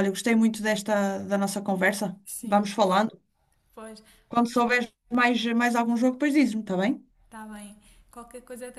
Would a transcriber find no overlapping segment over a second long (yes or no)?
yes